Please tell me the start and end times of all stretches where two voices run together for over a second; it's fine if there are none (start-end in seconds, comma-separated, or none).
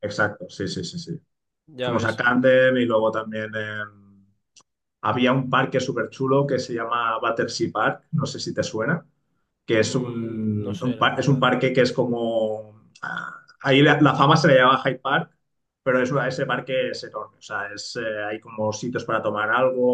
9.7-11.6